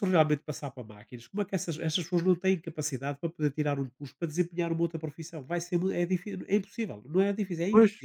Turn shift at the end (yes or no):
yes